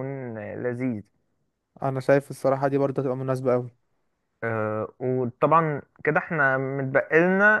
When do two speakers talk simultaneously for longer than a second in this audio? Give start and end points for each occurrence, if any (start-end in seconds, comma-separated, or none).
none